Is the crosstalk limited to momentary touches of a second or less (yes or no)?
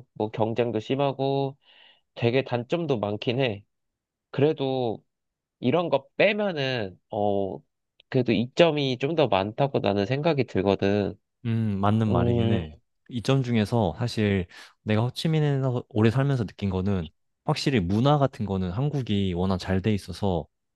yes